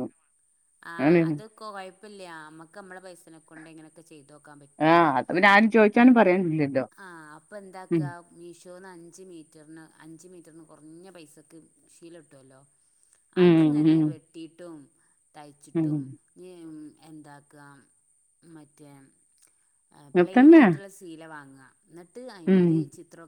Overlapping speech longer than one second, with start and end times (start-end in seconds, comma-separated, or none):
none